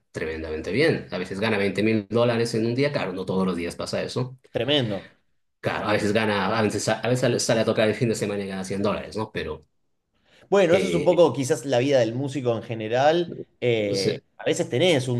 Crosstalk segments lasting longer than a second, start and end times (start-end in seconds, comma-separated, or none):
none